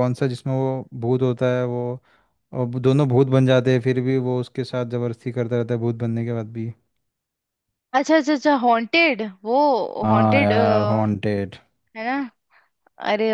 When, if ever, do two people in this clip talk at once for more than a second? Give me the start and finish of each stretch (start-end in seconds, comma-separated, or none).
10.0-11.3